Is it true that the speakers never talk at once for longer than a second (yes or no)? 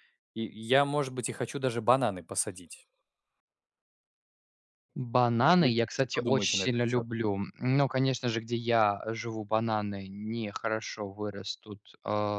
no